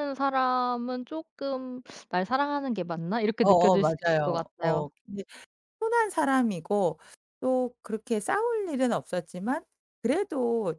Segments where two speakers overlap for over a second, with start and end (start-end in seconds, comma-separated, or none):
3.4-4.9